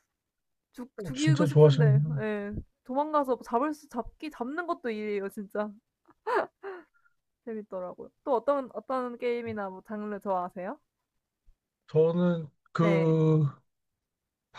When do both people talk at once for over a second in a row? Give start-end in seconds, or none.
1.0-2.3